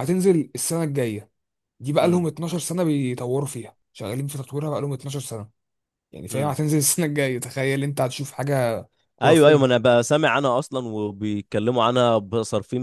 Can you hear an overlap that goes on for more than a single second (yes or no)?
no